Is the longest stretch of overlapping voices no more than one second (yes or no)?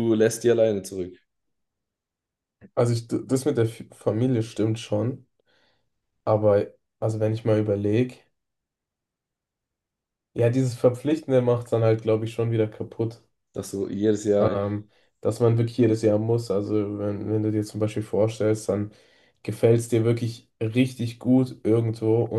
yes